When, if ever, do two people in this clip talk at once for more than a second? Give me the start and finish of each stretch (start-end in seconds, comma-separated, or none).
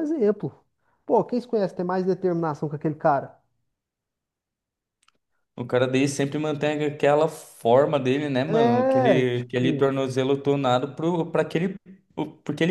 8.5-9.9